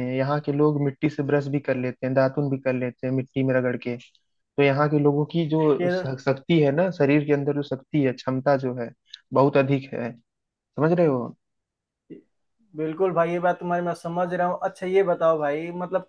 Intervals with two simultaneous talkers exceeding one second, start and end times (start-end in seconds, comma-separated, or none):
none